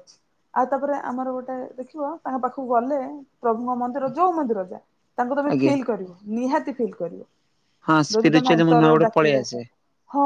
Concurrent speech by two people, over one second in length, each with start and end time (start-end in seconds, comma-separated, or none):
8.2-9.6